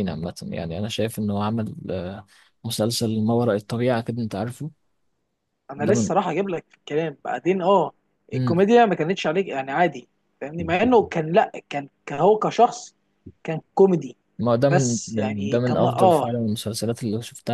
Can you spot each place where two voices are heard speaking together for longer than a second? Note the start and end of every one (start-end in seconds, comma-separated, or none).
14.7-16.3